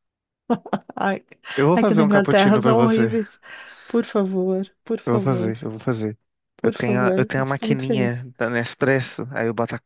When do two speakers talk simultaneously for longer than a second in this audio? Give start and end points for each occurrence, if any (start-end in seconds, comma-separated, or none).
1.7-3.1, 6.6-8.2